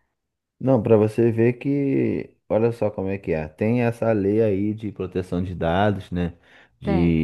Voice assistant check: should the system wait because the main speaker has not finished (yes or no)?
yes